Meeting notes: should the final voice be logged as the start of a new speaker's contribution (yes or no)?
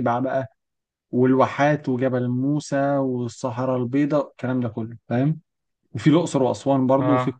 no